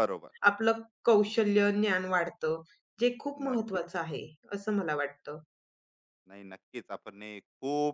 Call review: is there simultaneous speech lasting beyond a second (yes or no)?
no